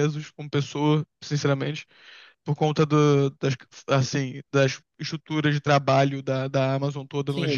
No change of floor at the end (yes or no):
no